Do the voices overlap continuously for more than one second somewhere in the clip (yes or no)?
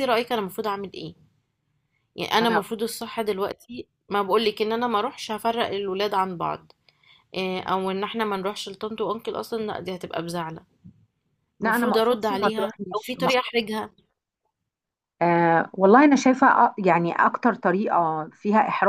yes